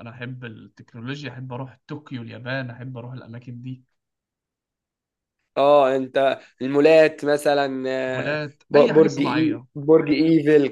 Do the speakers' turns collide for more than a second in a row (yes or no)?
yes